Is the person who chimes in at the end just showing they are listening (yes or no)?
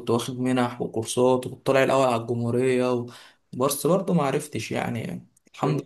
no